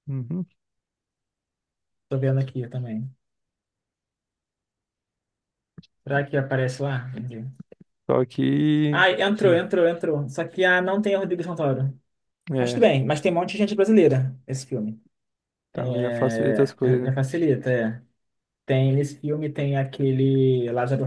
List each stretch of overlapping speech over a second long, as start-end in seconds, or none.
15.7-17.1